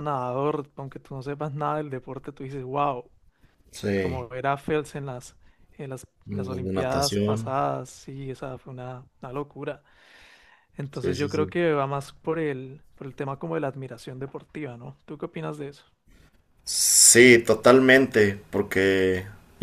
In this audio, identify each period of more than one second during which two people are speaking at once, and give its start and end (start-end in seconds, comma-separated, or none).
6.2-7.5